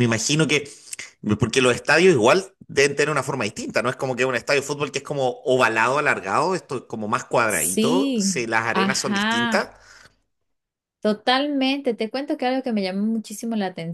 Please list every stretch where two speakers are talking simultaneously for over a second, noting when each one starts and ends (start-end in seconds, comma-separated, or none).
7.5-9.7